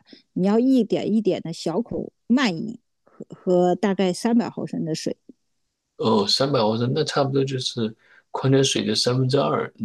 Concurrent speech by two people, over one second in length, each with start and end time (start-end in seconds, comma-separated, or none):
none